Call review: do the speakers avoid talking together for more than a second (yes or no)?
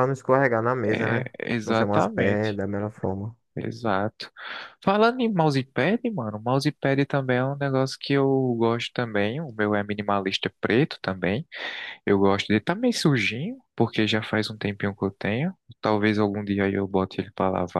no